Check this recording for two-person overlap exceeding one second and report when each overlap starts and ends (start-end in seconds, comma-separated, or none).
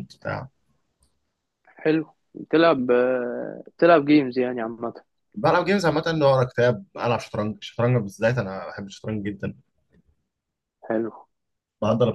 none